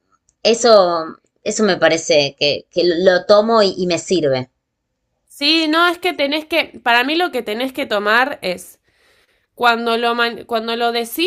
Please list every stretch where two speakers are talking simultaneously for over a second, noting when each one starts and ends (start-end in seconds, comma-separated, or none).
none